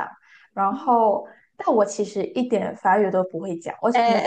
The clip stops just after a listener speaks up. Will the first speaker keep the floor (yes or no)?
yes